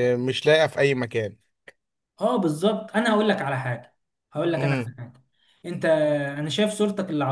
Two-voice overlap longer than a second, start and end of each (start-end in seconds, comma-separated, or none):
none